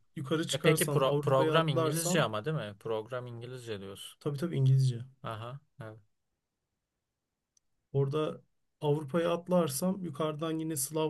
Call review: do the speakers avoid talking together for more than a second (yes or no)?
no